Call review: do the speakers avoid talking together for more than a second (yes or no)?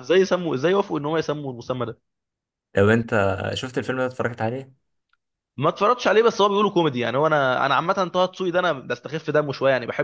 yes